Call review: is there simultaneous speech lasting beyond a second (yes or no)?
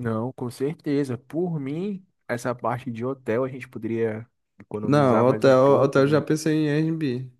yes